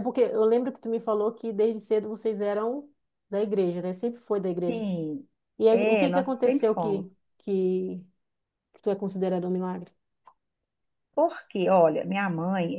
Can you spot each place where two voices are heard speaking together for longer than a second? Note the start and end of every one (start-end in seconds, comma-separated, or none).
5.7-7.0